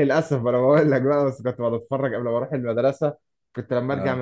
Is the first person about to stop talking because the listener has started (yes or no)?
no